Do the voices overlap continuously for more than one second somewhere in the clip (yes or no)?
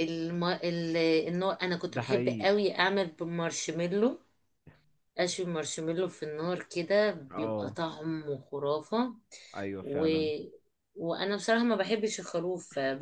no